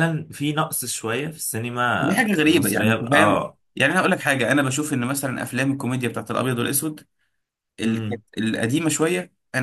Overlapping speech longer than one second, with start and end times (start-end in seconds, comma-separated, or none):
2.0-3.6